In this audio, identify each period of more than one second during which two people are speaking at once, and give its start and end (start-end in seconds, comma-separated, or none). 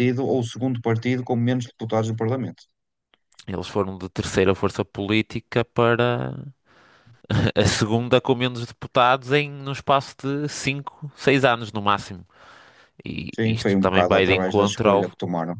13.4-15.1